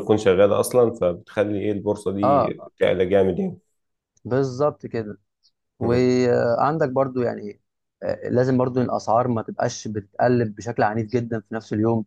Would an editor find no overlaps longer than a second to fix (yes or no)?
yes